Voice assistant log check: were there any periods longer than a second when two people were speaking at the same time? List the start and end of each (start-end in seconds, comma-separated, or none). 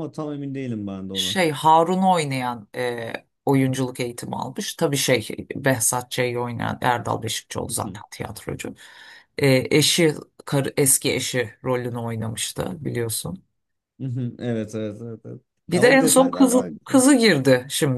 15.7-17.0